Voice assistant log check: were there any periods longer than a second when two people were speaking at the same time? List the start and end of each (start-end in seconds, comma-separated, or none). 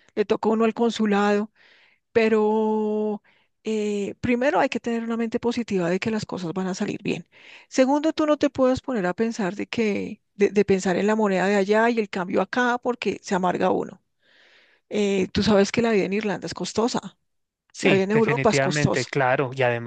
17.8-19.1